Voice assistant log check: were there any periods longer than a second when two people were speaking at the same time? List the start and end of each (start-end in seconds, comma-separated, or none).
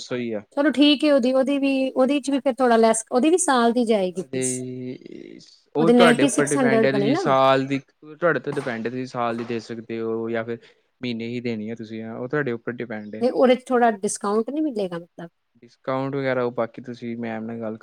5.8-7.2